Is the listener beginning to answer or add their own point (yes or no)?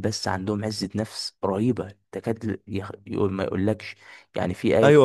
yes